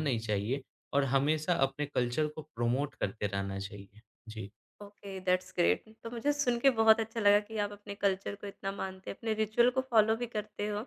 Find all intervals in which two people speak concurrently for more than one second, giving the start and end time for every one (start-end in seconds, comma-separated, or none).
none